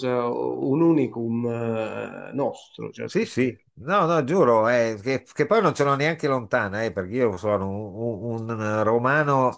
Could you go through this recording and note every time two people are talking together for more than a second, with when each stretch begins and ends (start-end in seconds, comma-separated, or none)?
none